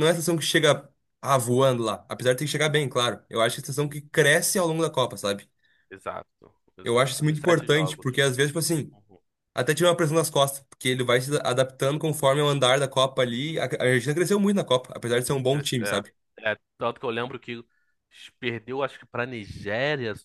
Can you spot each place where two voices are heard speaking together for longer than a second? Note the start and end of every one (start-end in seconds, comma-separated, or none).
6.8-8.1